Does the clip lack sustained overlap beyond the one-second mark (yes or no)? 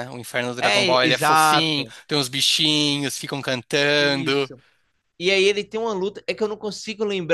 no